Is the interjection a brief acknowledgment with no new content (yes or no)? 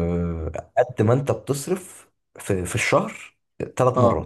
yes